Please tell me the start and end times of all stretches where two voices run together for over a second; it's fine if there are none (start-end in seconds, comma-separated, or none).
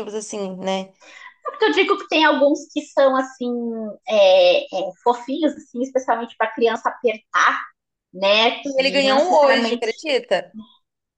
8.6-9.9